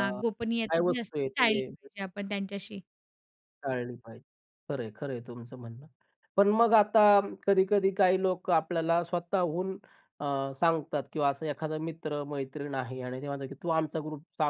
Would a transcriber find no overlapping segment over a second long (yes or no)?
no